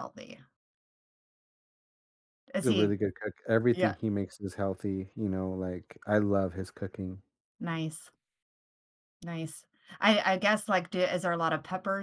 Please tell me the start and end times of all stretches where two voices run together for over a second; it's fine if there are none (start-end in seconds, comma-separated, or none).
none